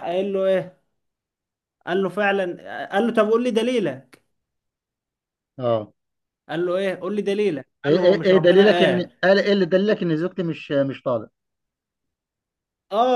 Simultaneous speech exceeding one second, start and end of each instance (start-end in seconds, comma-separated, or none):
7.8-9.2